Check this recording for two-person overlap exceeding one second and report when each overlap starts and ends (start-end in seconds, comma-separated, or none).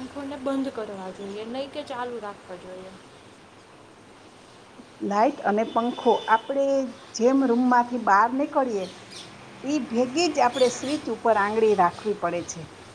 none